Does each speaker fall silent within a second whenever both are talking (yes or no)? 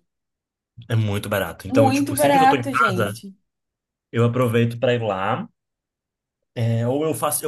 no